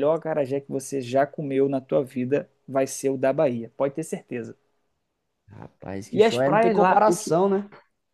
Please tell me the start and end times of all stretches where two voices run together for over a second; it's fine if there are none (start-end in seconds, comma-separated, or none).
6.1-7.4